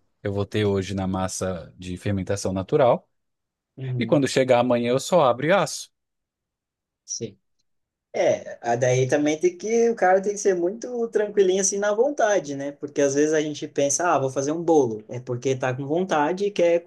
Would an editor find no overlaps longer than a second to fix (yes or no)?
yes